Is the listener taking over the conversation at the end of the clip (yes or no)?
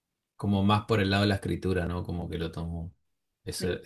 no